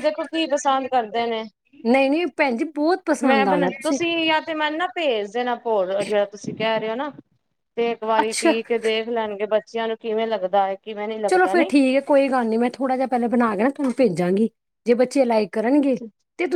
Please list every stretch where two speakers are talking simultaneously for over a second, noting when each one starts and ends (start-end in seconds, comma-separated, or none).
none